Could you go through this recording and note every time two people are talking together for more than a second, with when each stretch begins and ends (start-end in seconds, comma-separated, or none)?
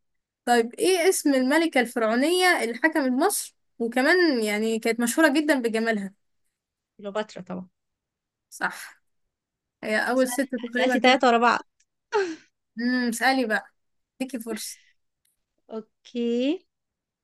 10.1-11.4